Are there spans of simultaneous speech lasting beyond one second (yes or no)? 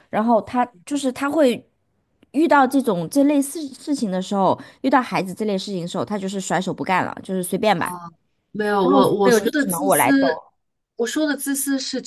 yes